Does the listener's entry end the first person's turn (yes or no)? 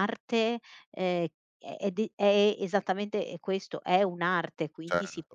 yes